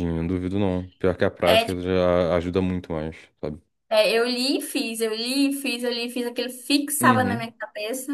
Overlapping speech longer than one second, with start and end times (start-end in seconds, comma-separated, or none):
none